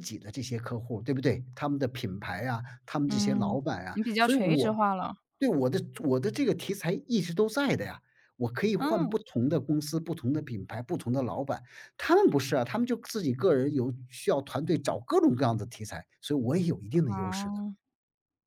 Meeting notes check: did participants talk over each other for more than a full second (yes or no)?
yes